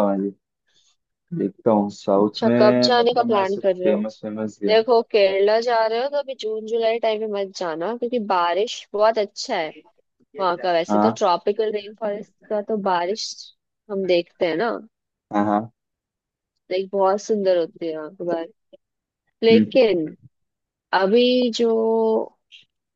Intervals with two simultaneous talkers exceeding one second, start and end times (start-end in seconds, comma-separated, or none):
2.2-4.0